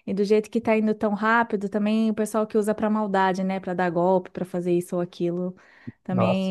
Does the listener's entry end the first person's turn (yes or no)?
no